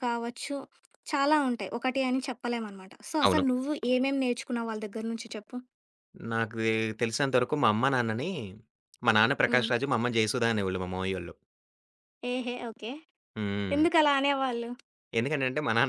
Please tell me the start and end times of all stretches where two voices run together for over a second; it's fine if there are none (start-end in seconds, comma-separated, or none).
none